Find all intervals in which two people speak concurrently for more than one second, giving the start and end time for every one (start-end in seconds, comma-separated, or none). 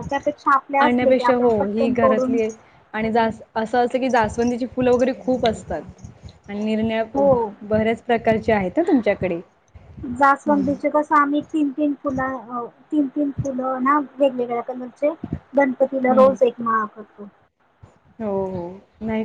0.8-2.4